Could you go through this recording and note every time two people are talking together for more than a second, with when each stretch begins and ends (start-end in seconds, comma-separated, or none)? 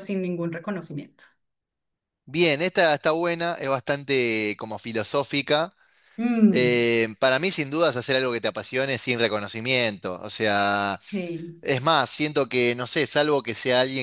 none